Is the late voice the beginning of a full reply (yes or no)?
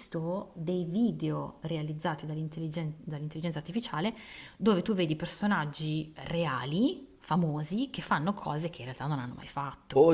yes